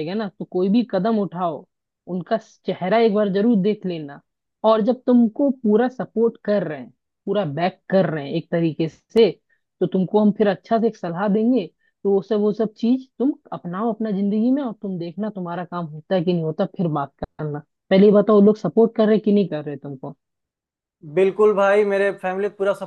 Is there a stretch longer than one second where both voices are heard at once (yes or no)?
no